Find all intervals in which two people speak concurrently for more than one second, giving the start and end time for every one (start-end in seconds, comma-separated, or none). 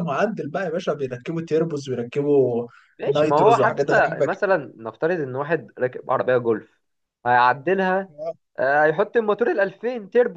3.1-4.5